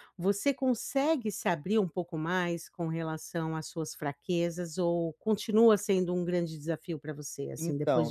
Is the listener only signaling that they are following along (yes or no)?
no